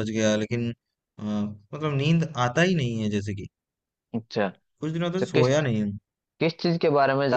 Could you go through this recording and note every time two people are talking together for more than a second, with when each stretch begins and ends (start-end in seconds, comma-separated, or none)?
none